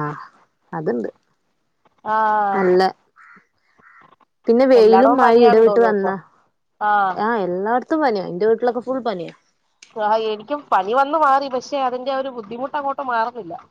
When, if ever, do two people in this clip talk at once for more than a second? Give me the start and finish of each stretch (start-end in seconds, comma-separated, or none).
4.8-6.1